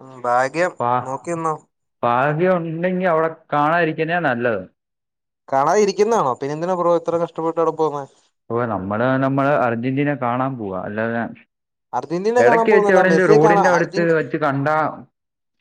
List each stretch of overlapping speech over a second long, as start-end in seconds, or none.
12.4-14.2